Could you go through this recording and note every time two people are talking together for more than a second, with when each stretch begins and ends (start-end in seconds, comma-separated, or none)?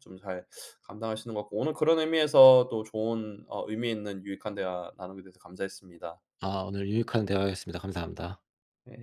none